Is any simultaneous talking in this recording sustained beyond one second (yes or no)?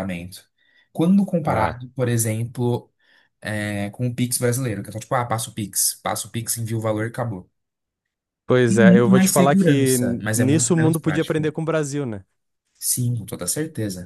yes